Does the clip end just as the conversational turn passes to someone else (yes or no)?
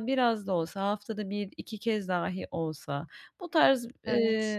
no